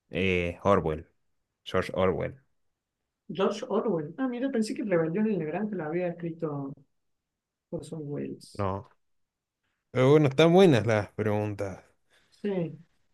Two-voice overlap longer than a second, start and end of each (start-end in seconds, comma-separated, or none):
none